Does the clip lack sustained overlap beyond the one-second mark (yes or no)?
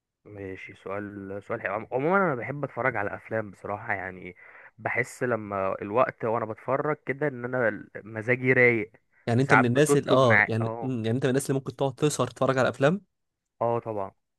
no